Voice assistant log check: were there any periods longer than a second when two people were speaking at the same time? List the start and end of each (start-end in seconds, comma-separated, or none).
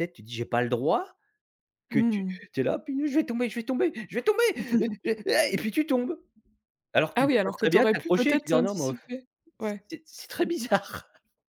7.1-9.0